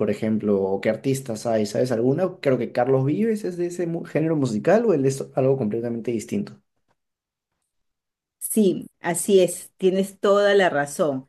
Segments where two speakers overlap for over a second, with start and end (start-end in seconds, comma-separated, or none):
none